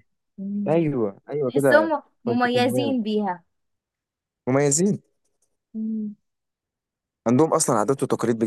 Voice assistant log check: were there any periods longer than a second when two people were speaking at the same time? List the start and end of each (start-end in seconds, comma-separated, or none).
1.5-3.0